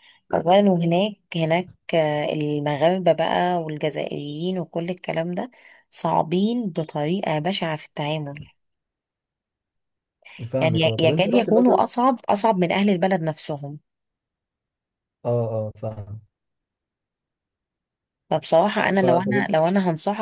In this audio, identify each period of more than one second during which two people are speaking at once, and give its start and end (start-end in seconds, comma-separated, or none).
10.6-11.9